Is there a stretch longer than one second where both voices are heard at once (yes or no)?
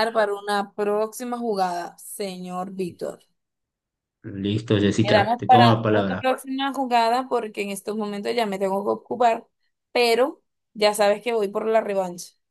yes